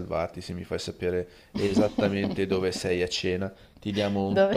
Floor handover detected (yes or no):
no